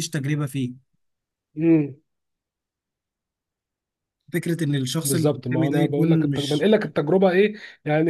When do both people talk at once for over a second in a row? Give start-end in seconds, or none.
5.0-6.7